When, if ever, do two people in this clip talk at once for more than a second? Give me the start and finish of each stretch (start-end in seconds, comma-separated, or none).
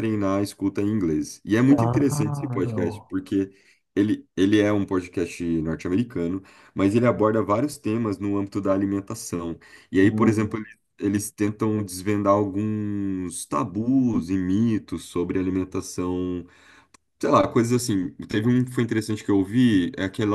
1.7-3.1